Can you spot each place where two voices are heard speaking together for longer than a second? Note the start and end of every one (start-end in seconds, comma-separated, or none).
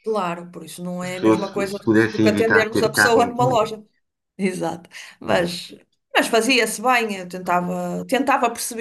1.0-3.5